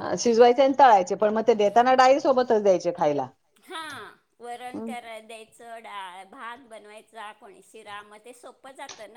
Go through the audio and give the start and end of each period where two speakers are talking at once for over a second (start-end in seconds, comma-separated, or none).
none